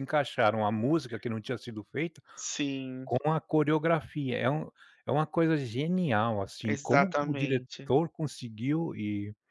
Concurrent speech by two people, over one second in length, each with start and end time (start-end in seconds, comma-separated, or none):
6.7-7.9